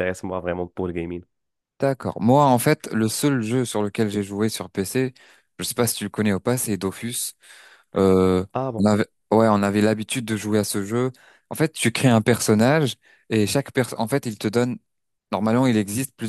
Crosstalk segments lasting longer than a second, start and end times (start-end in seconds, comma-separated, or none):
none